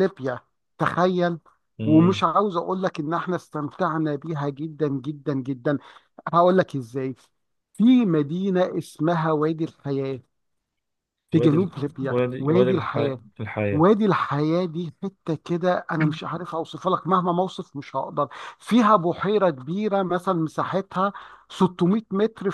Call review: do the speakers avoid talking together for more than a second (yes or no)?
no